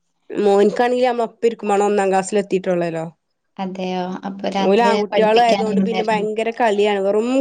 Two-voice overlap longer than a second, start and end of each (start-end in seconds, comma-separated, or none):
4.7-6.3